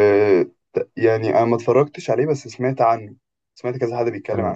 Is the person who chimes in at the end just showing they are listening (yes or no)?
no